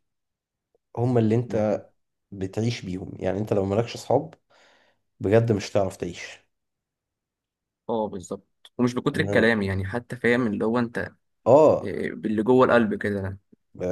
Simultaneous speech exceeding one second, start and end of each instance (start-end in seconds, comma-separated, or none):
none